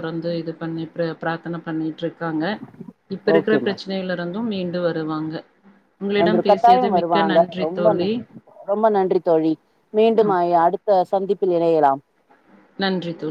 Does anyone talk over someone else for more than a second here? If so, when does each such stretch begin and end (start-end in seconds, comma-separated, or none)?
6.2-7.9